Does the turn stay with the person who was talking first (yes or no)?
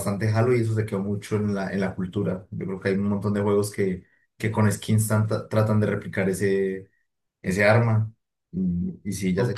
no